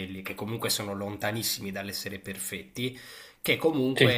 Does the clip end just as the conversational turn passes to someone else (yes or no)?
no